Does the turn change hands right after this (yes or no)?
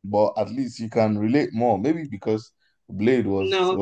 no